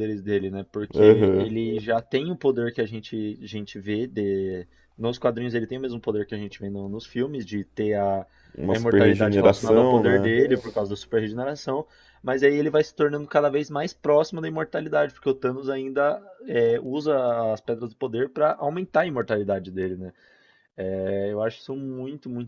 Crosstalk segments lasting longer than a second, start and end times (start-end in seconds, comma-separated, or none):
8.7-10.3